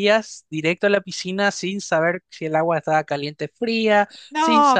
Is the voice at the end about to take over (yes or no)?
yes